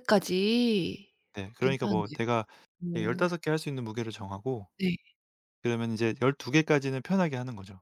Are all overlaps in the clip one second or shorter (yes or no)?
yes